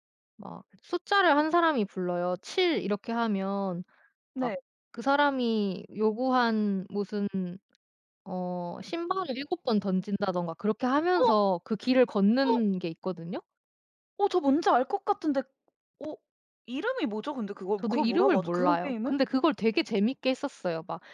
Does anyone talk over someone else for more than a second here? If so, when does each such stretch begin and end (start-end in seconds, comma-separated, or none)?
17.8-19.1